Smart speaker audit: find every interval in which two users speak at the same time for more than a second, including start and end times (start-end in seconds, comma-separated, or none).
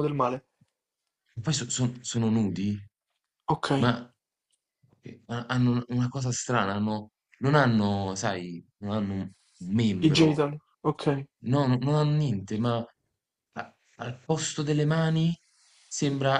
none